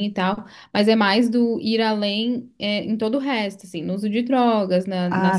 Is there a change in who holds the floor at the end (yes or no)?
yes